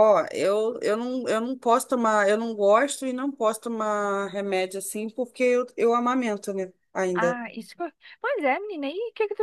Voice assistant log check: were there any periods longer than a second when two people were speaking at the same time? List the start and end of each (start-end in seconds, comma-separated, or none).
none